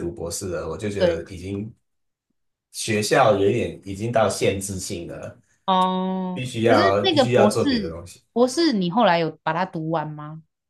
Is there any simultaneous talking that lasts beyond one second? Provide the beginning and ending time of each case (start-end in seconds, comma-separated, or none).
6.3-8.0